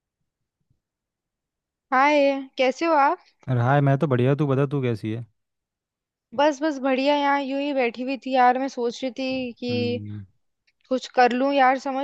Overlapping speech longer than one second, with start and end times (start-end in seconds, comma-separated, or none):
none